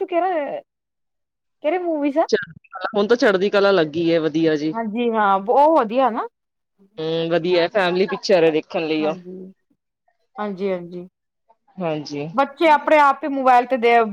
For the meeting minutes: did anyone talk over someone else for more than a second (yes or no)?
no